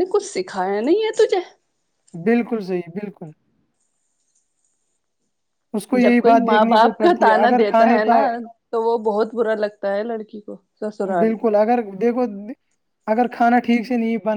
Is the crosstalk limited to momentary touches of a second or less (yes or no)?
no